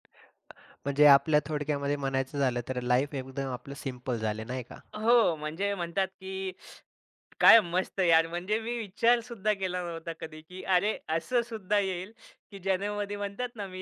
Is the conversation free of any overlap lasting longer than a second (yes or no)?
yes